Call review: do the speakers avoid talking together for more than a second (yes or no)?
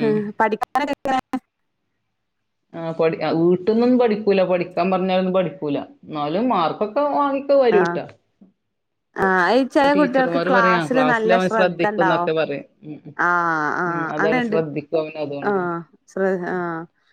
no